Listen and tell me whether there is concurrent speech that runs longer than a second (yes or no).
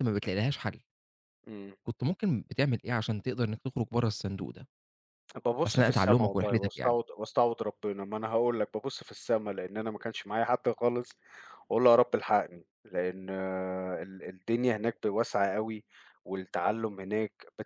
yes